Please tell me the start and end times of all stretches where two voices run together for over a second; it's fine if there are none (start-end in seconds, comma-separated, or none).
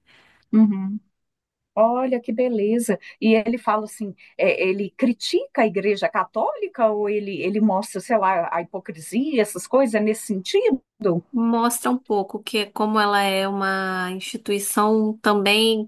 none